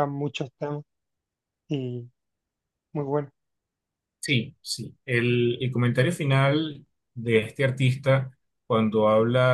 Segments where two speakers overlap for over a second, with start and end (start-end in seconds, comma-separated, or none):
none